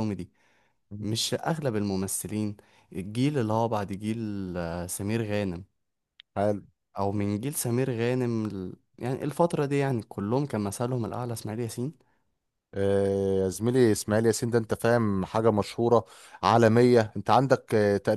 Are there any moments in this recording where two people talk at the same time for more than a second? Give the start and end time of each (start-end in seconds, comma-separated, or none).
none